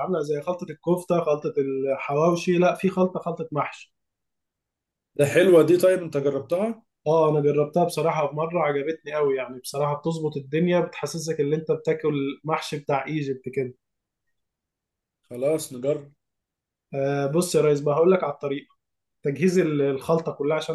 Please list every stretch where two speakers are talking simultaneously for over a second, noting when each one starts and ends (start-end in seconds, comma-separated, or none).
none